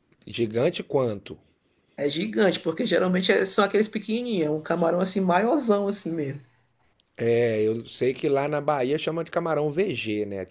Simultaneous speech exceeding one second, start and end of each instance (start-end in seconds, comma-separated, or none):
none